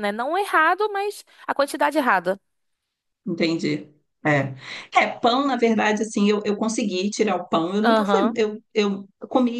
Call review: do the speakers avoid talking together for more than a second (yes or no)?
yes